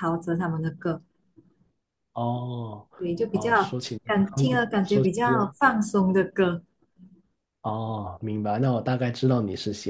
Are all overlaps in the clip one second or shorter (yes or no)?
no